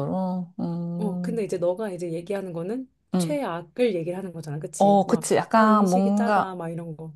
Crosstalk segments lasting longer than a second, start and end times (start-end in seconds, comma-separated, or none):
4.8-6.6